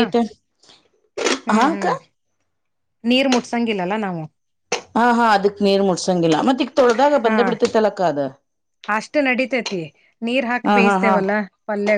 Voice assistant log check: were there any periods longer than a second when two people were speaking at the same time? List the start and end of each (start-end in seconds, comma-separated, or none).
none